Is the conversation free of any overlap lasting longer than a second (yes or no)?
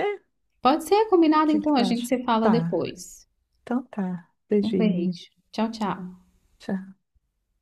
no